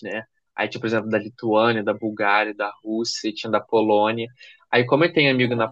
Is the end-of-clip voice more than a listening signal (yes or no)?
no